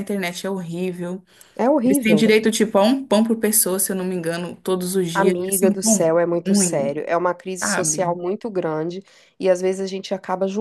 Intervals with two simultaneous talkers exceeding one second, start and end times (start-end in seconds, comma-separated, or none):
5.2-7.0